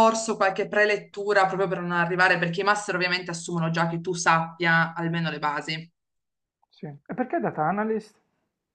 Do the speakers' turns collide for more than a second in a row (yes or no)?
no